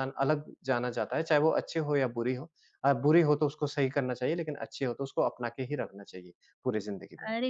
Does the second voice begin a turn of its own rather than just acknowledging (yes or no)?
yes